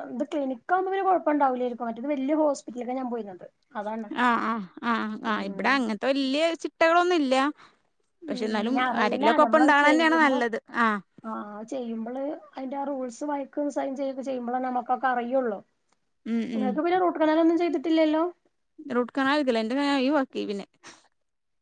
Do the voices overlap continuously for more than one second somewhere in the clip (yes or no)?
yes